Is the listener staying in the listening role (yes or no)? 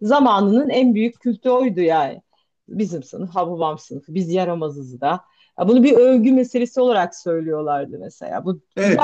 no